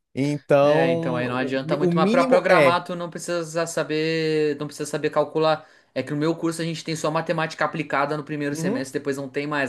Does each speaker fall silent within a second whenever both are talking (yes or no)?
no